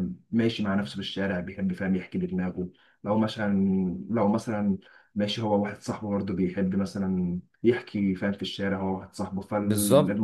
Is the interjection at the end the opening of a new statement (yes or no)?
yes